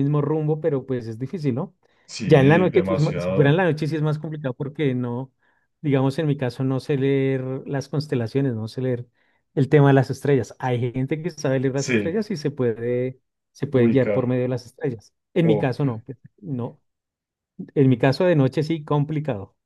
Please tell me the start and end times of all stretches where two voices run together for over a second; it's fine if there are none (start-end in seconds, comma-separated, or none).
2.2-3.6